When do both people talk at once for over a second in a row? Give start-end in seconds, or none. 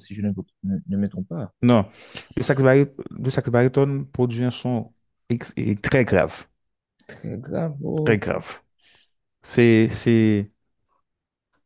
none